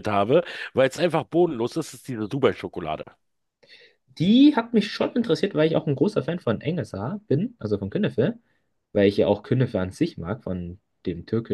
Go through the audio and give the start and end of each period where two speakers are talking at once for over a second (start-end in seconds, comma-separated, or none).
none